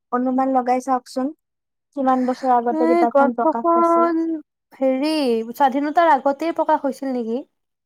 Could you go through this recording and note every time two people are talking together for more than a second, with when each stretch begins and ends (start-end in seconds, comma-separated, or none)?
2.8-4.1